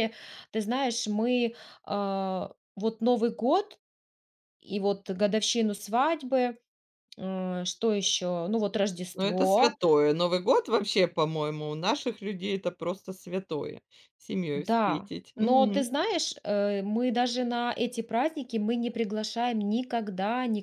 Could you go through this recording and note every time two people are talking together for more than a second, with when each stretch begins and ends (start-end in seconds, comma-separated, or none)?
14.5-15.9